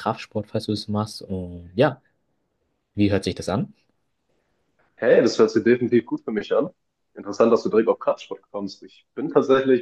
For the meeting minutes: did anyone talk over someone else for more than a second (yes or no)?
no